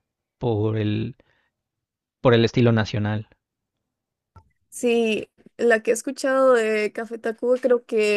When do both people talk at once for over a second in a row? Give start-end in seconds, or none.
none